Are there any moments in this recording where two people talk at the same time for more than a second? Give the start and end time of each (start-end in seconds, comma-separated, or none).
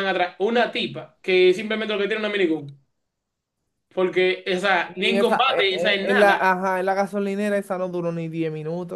4.9-6.4